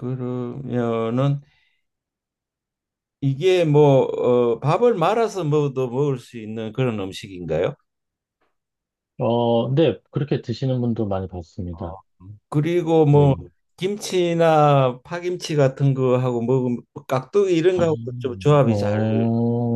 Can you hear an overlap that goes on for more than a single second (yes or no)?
yes